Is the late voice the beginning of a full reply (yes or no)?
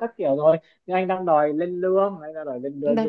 yes